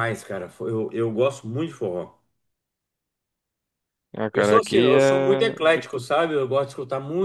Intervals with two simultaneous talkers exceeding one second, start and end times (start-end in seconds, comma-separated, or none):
4.3-6.0